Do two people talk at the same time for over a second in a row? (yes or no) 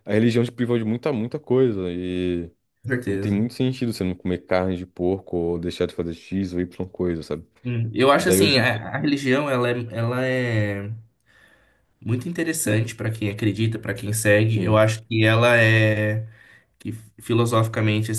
no